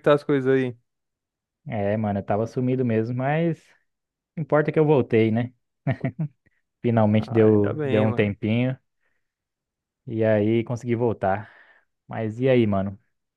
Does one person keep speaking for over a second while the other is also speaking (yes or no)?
yes